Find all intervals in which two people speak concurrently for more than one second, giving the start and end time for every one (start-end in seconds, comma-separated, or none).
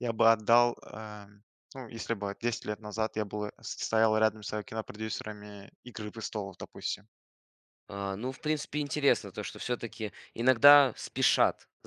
none